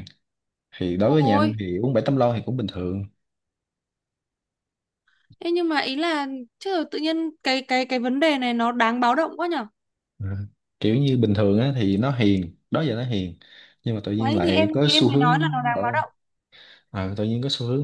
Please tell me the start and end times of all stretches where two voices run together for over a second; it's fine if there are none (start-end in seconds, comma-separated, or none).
14.2-16.0